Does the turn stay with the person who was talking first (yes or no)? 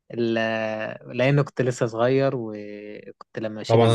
no